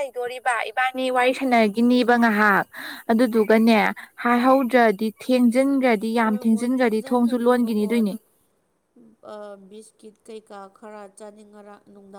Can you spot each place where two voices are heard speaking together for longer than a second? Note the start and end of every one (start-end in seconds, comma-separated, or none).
6.2-8.1